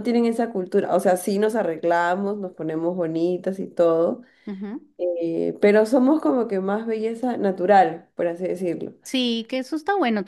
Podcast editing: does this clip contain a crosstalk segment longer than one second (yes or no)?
no